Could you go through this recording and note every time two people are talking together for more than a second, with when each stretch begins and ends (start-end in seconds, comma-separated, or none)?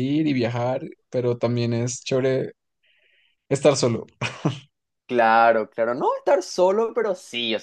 none